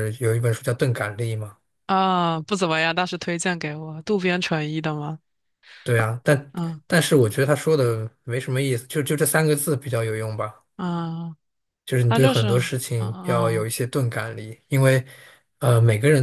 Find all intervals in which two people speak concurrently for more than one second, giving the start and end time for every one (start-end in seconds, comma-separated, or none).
12.1-13.7